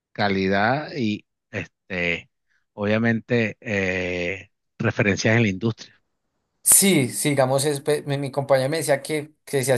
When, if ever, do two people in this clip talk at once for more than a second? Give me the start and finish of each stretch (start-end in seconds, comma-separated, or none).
none